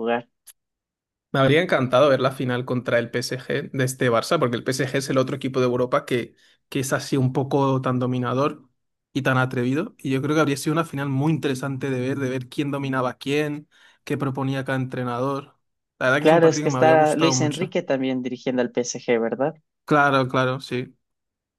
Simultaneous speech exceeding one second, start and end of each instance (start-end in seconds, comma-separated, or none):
16.2-17.8